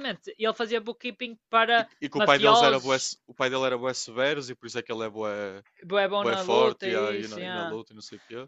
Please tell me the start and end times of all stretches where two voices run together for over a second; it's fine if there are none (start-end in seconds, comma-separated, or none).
1.8-3.1, 6.2-7.8